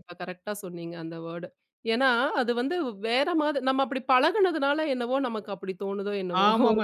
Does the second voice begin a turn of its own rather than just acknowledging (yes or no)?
yes